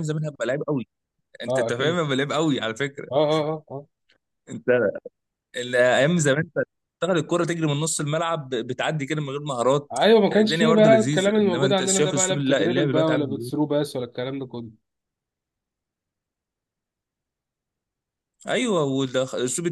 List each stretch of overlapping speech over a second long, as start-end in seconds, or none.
9.9-13.5